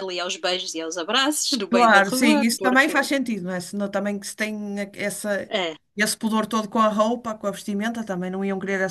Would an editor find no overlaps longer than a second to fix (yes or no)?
no